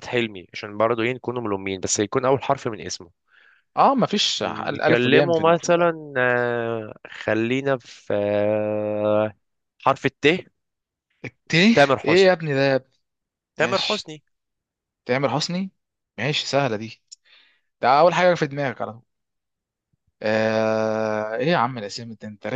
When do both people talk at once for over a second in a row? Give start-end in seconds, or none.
4.4-5.9